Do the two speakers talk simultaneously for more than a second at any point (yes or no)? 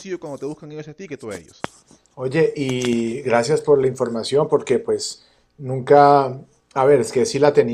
no